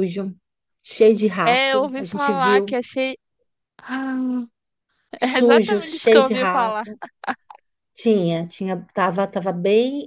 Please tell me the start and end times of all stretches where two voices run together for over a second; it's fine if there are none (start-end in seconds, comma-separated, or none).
1.4-2.8, 5.2-6.8